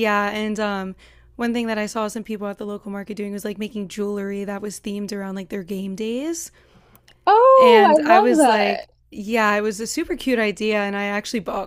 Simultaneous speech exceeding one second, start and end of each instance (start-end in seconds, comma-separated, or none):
7.6-8.8